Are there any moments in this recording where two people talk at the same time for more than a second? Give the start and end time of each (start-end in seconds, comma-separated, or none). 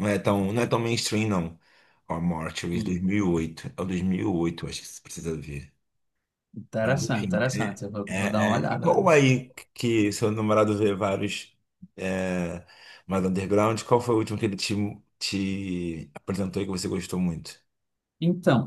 6.8-9.0